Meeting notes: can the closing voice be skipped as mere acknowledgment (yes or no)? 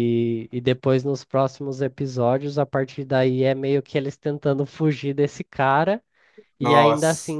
yes